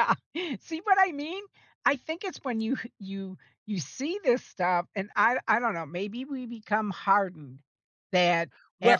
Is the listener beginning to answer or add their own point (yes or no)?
no